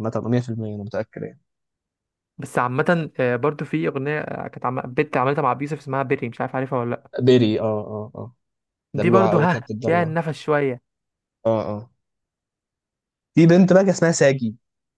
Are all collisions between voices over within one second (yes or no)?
no